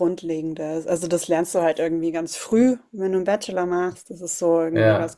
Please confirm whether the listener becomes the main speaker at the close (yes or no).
no